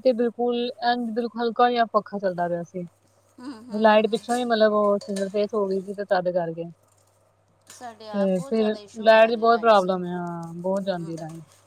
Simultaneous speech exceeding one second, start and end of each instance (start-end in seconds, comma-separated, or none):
8.1-9.9